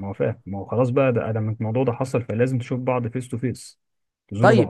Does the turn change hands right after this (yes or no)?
yes